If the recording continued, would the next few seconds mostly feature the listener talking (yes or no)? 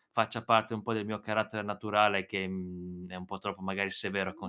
yes